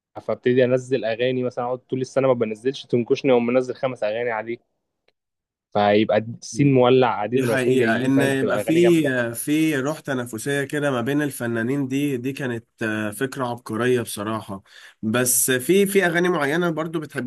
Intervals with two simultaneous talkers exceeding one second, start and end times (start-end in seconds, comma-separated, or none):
7.3-9.1